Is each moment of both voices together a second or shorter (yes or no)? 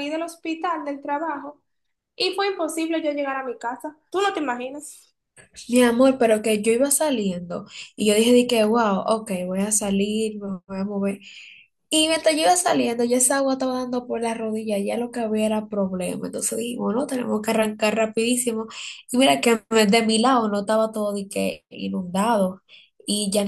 yes